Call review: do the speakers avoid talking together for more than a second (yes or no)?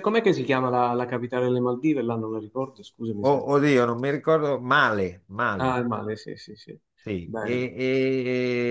yes